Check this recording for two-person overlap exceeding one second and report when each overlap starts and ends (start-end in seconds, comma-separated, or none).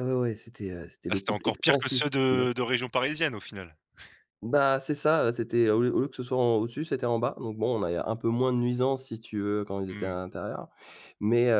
1.1-2.4